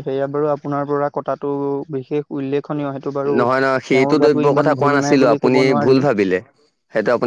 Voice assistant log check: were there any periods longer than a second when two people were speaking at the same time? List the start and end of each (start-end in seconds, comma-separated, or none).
4.0-6.0